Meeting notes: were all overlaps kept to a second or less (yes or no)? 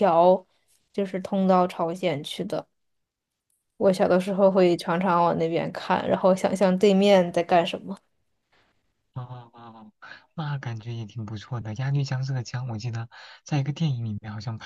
yes